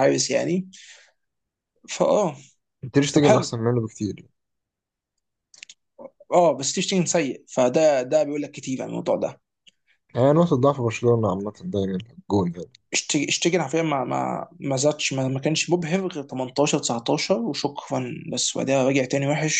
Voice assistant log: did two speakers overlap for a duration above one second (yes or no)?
no